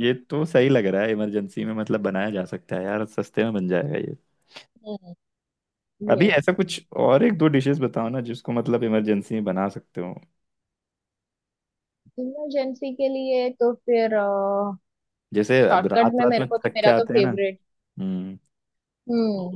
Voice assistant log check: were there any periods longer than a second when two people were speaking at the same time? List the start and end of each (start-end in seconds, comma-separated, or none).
15.6-17.3